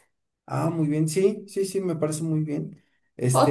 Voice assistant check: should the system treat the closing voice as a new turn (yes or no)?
yes